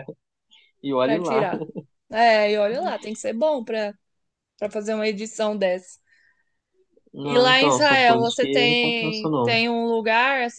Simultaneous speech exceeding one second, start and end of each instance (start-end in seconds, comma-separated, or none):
7.2-9.6